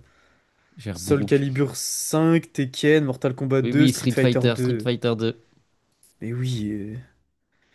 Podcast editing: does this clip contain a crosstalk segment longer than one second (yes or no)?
yes